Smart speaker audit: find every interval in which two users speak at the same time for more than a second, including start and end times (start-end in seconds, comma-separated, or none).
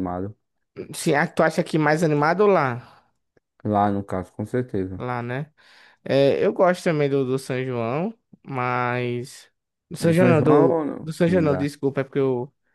10.0-11.7